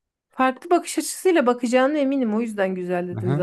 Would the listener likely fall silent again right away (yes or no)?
no